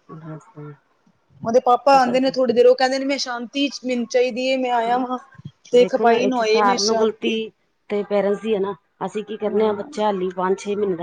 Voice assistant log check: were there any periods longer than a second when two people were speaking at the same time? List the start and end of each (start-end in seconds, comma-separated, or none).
5.8-7.3